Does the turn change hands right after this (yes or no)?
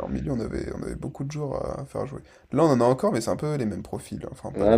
yes